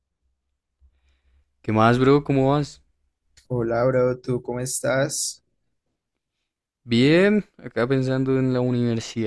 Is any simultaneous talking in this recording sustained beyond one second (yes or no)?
no